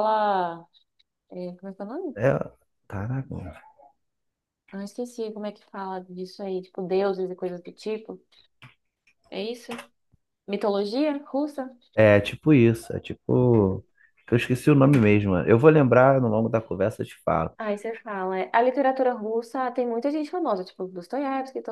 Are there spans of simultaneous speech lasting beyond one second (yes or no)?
no